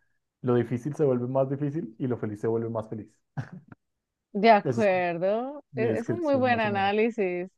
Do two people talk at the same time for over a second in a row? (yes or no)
yes